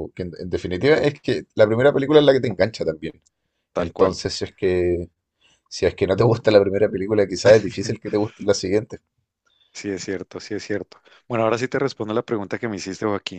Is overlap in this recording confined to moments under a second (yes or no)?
yes